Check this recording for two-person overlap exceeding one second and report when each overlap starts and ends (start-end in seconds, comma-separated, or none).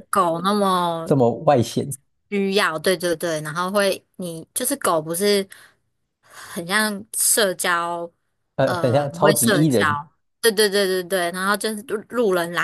8.6-9.9